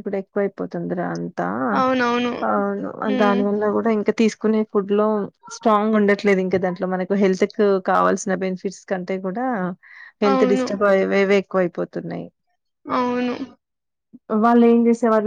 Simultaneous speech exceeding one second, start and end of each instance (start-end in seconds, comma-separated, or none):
none